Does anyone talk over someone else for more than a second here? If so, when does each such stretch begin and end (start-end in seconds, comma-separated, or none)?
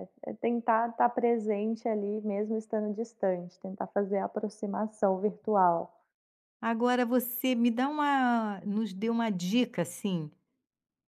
none